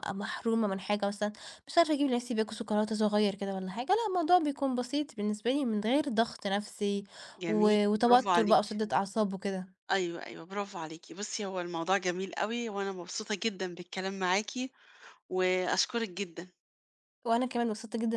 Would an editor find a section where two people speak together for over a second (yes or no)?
yes